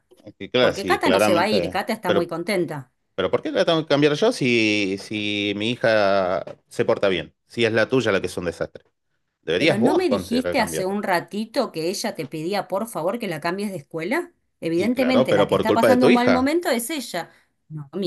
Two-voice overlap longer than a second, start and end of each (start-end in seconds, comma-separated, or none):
0.6-2.3, 9.6-11.0, 14.7-16.5